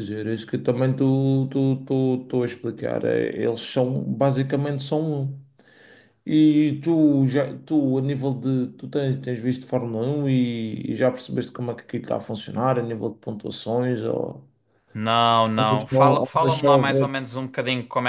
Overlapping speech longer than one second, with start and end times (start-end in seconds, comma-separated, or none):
15.6-17.1